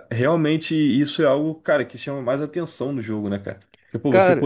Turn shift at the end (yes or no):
no